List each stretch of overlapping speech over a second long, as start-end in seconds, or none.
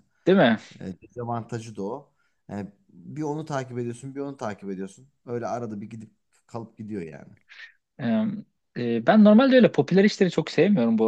none